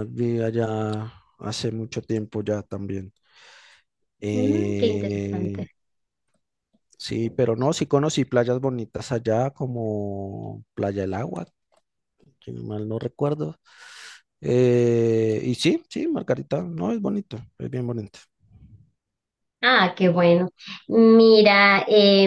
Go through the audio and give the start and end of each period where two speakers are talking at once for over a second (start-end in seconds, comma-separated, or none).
4.3-5.7